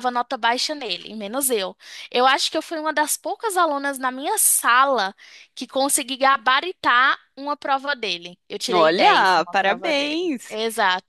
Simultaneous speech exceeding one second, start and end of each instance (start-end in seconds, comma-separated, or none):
8.7-10.6